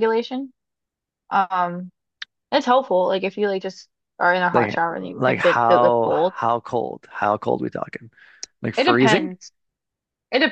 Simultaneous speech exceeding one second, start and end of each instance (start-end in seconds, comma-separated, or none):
4.5-6.4